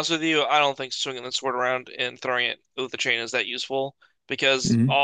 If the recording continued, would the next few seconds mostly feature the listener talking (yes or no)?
no